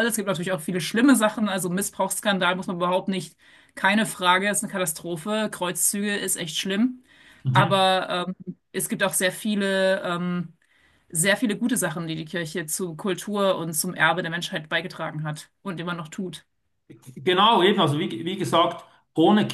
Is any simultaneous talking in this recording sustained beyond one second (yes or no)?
no